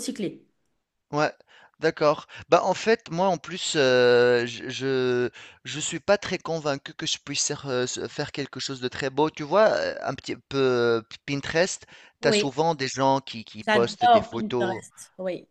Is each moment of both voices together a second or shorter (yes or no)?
no